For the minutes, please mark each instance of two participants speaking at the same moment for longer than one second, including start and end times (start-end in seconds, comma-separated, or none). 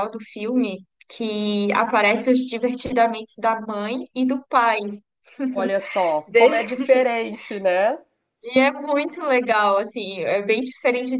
none